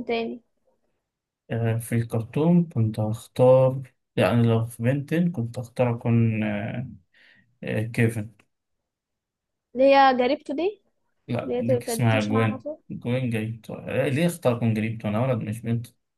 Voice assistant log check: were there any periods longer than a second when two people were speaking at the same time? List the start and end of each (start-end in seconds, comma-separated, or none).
11.4-12.8